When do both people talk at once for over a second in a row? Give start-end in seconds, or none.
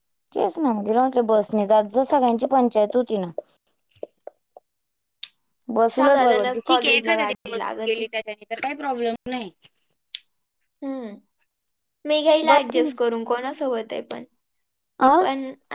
5.9-8.0